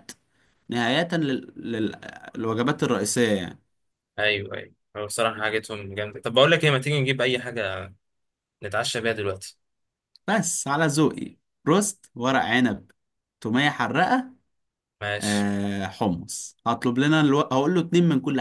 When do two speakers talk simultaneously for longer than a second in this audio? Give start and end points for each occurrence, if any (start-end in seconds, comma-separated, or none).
none